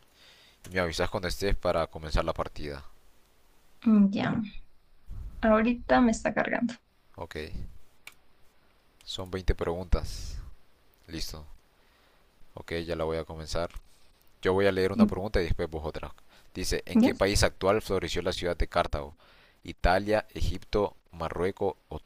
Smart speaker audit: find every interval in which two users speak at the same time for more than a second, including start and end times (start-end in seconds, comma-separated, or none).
none